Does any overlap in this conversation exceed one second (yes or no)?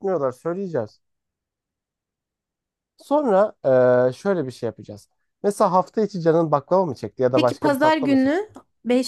yes